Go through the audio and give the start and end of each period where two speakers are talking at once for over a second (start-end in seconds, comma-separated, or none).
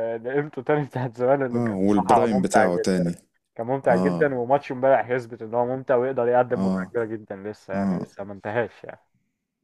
1.5-3.0